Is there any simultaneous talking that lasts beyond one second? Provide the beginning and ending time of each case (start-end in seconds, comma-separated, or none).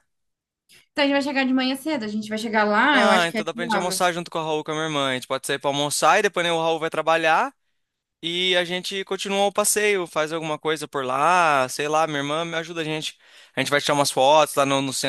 2.9-4.2